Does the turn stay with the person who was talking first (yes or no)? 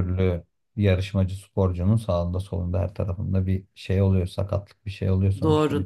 no